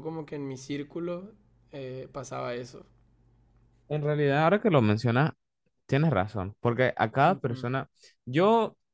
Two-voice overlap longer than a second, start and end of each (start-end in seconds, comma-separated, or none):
none